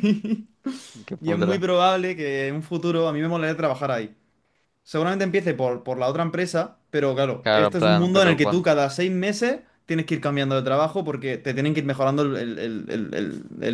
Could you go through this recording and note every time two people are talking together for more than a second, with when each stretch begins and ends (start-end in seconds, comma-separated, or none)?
7.4-8.7